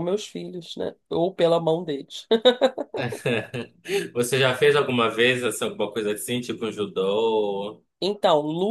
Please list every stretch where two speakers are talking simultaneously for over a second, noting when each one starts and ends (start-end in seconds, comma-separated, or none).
none